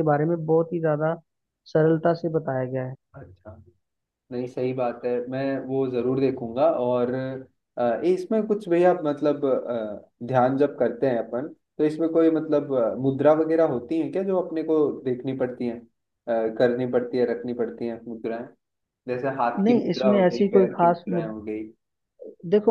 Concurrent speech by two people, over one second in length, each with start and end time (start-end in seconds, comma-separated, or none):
19.7-21.3